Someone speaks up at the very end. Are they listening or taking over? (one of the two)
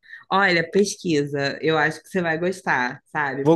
listening